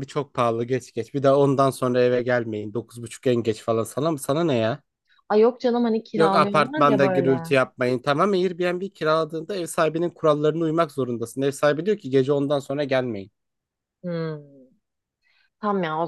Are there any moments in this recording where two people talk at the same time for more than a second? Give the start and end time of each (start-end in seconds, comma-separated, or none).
6.2-7.4